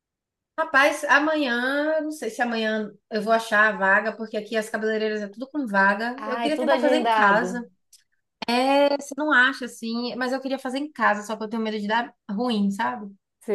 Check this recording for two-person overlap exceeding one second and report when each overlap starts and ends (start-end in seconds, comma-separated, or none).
6.2-7.6